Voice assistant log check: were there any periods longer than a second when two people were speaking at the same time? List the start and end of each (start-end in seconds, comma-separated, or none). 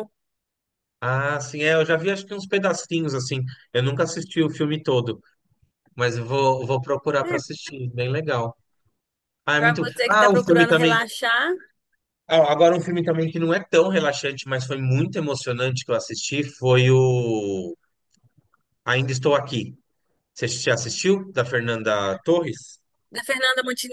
9.6-11.0